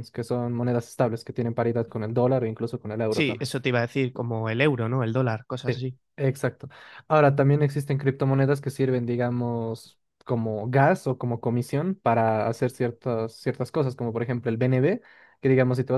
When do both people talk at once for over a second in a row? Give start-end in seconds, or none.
none